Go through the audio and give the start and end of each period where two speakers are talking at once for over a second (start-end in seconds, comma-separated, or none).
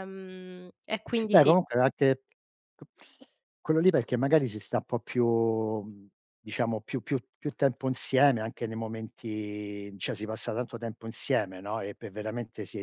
none